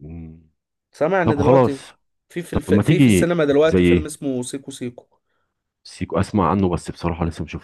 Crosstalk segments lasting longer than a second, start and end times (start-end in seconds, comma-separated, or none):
2.5-4.1